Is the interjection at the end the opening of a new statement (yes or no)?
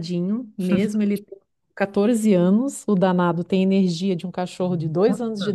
no